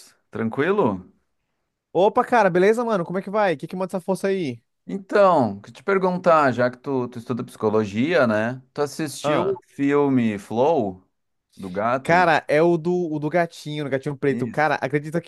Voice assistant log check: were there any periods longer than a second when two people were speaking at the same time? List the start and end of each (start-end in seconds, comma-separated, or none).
none